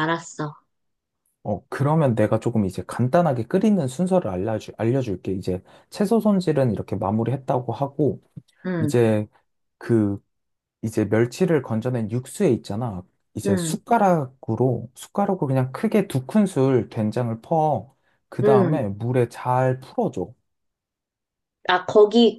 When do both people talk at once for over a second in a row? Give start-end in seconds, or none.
none